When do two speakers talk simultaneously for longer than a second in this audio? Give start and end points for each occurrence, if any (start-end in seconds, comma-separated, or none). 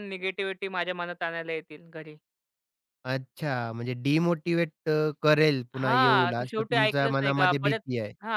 5.8-7.8